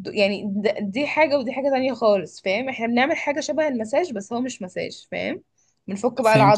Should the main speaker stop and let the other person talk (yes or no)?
yes